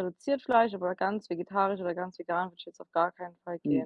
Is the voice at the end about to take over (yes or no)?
yes